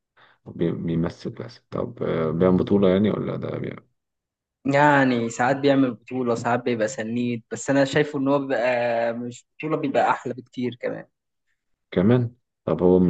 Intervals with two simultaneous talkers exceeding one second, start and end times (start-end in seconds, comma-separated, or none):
none